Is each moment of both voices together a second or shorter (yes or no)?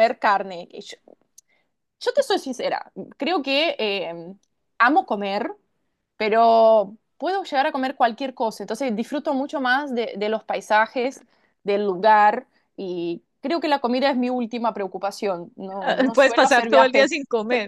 no